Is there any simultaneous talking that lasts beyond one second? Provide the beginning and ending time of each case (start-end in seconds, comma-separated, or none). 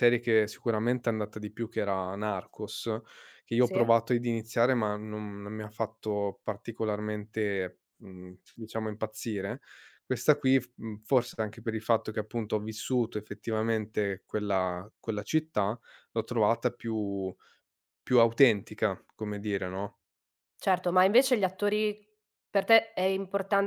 none